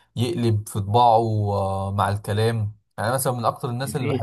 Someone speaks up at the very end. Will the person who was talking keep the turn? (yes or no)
yes